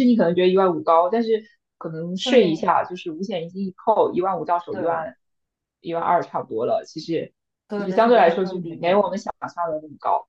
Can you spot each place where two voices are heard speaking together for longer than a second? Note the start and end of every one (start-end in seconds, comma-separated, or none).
7.7-9.2